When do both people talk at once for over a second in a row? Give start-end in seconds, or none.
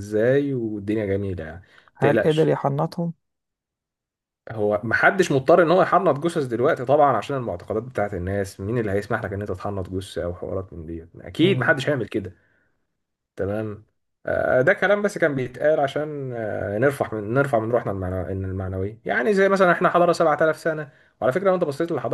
none